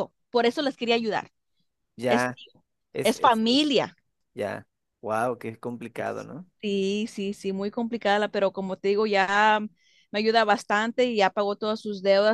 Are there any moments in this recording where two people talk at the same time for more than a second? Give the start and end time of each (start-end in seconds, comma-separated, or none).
none